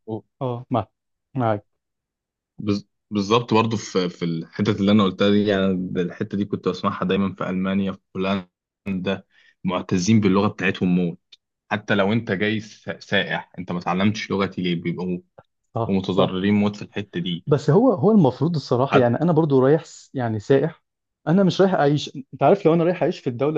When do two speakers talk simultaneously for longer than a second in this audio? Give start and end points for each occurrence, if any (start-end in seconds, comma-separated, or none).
none